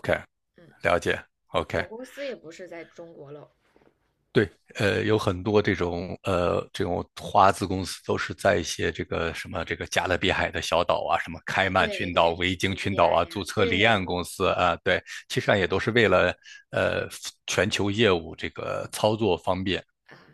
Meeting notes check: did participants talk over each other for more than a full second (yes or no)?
yes